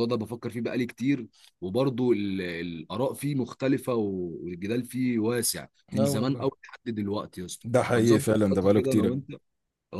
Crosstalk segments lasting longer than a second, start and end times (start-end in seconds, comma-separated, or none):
7.7-9.2